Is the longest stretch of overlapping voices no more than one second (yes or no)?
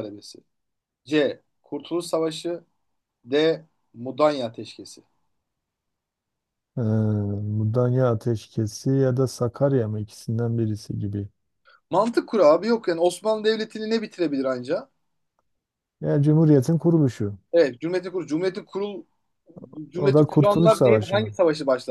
no